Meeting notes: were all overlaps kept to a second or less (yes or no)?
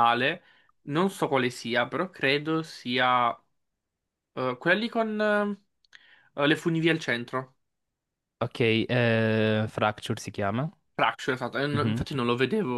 yes